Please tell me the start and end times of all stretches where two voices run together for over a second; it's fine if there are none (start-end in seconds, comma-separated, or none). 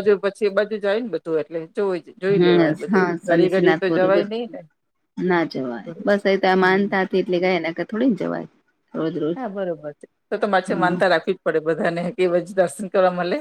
2.4-4.0